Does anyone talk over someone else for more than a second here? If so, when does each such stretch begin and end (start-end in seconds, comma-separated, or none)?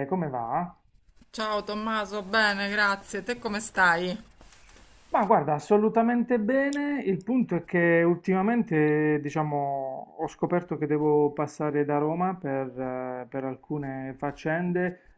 none